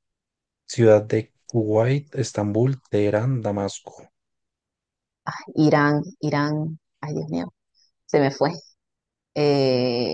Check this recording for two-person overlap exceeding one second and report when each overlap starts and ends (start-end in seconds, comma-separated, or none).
none